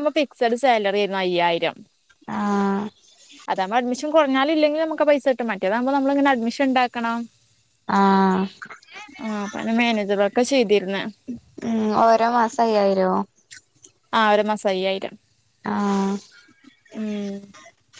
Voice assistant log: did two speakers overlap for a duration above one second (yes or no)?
no